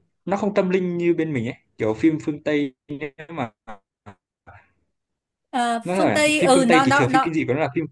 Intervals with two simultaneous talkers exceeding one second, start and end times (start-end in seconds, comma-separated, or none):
5.8-7.4